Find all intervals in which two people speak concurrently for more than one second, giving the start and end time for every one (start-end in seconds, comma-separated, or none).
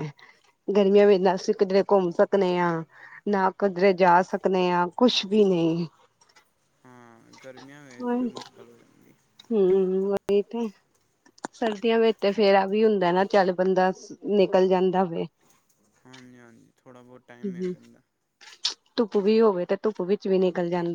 none